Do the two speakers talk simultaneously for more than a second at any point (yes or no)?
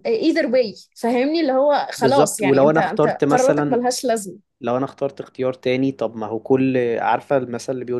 yes